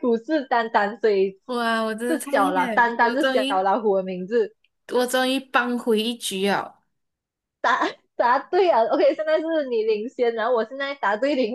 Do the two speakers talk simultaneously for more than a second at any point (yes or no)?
yes